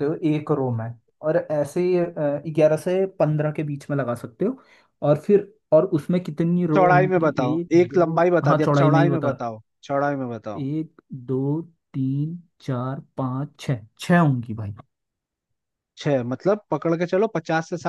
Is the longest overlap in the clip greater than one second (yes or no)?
yes